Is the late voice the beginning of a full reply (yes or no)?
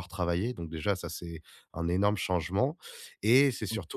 no